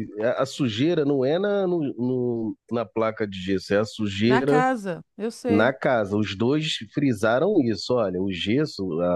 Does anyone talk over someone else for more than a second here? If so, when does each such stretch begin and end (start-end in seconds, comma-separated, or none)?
none